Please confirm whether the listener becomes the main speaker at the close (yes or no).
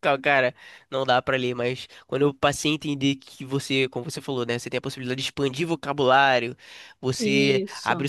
no